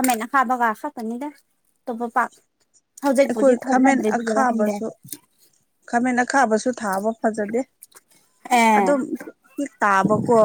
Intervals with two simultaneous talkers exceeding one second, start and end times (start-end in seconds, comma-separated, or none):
3.2-4.8